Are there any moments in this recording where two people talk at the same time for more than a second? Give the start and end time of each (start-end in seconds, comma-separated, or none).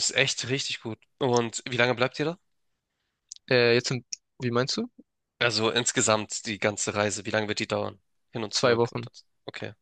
none